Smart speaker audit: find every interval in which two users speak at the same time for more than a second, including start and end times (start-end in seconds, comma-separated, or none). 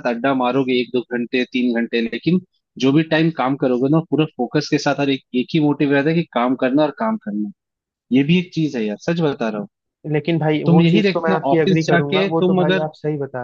10.7-12.9